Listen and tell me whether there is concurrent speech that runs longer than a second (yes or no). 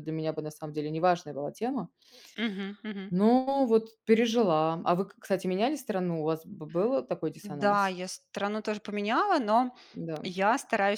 no